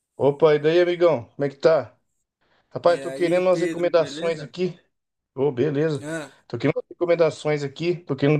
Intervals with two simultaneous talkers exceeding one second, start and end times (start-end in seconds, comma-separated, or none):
2.9-4.5